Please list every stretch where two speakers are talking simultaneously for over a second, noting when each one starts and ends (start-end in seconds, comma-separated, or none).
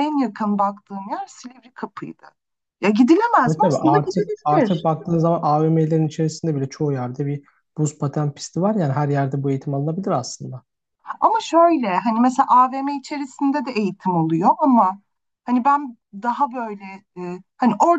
3.5-4.9